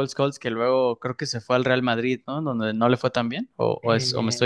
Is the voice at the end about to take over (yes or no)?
yes